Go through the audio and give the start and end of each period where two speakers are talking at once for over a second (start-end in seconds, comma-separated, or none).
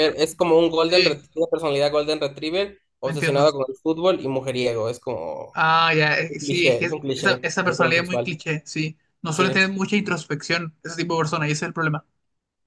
6.3-8.4